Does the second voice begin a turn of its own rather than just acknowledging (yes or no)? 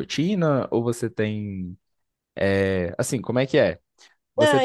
yes